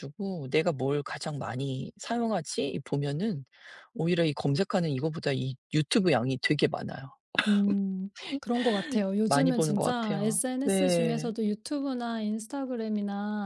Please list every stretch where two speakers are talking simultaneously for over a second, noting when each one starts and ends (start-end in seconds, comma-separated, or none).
9.3-11.3